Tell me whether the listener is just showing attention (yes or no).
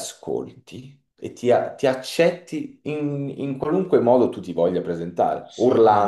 yes